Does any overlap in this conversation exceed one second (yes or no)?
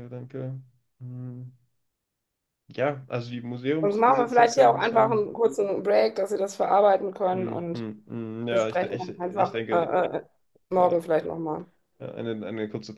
yes